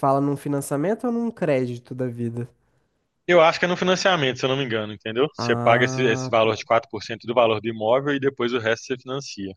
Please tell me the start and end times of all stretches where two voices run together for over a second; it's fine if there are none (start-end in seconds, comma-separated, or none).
5.4-6.7